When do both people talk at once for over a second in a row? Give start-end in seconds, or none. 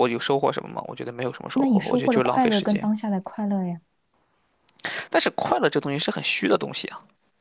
1.5-2.9